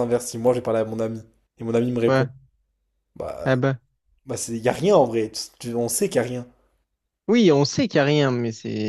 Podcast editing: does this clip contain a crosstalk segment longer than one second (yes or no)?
no